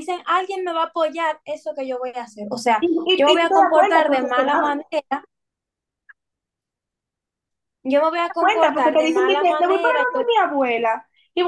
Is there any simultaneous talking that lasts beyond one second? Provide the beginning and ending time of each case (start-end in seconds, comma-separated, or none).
2.8-4.7, 8.4-10.2